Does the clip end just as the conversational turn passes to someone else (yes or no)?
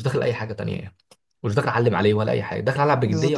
yes